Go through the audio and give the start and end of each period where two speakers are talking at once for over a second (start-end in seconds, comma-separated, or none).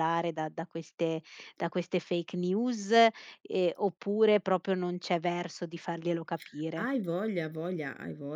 none